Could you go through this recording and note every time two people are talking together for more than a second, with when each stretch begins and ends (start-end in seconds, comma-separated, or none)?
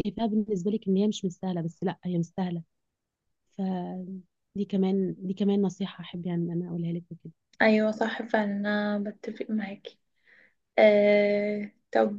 none